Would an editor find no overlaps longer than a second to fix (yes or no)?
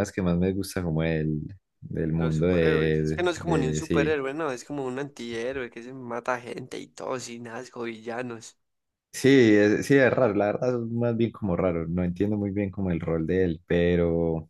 no